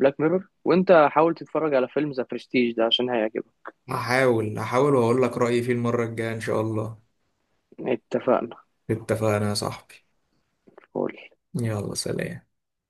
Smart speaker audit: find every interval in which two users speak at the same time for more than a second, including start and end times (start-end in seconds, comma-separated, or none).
none